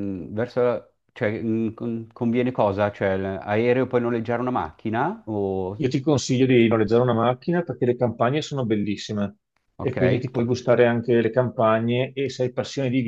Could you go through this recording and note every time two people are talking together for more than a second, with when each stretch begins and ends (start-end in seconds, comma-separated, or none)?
none